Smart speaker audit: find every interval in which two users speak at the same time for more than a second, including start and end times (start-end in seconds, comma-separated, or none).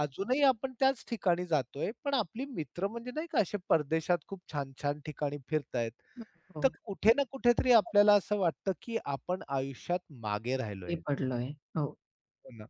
none